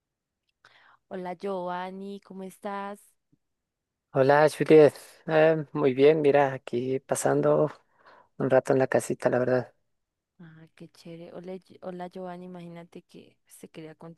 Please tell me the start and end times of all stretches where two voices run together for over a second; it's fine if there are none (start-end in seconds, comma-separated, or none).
none